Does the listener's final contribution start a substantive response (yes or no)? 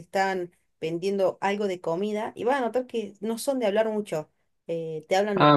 no